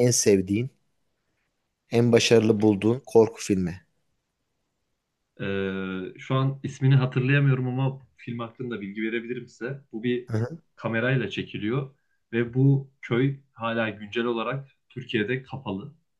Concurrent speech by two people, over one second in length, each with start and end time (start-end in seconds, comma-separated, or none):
none